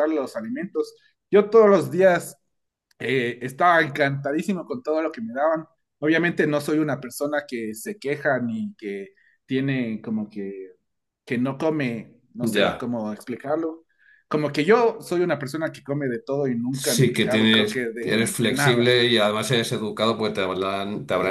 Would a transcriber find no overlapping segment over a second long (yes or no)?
no